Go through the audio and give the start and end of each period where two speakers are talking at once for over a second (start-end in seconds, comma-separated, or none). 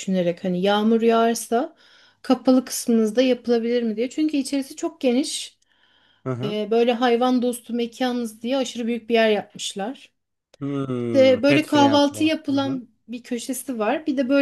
11.1-12.8